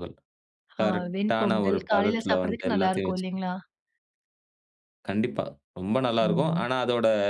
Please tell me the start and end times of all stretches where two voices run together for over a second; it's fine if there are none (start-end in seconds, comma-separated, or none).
0.8-3.3